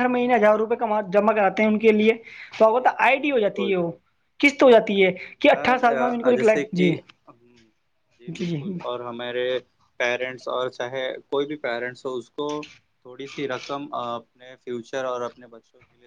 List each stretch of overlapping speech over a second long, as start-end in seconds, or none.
5.5-6.9